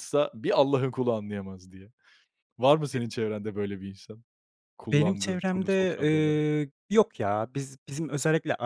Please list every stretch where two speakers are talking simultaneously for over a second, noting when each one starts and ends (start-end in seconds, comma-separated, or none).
4.9-6.4